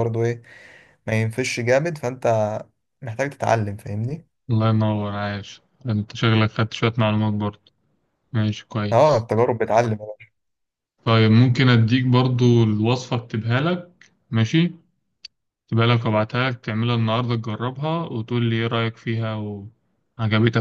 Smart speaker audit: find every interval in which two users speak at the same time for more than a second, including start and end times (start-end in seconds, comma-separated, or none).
none